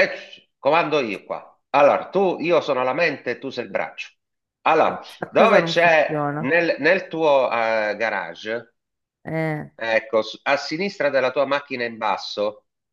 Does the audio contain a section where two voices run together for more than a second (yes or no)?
yes